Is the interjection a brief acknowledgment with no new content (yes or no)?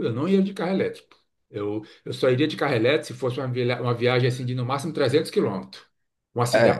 yes